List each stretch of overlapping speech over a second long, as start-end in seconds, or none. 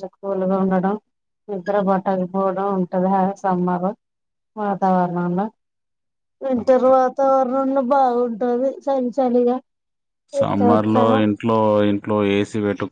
none